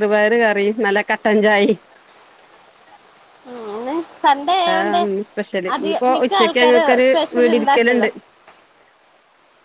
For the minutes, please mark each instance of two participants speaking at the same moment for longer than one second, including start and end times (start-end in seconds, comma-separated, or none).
5.8-8.1